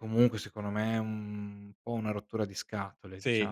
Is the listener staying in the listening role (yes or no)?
no